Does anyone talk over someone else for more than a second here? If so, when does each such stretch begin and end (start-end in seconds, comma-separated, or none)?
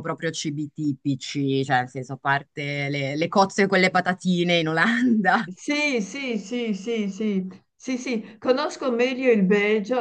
none